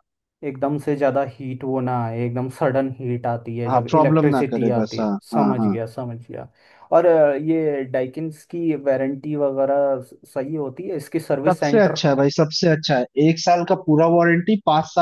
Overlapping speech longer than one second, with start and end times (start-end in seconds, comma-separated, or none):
3.7-5.8